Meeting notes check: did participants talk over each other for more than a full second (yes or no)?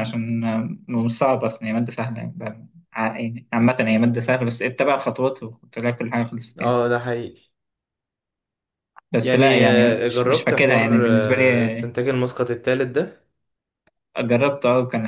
yes